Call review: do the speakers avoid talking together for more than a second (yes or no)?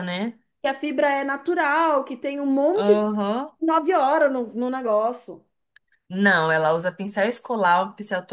yes